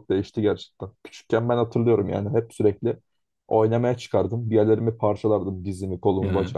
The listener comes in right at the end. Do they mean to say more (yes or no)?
no